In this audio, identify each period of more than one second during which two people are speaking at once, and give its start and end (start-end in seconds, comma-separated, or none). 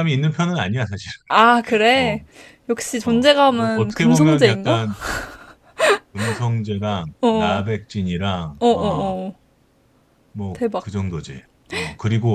3.0-4.9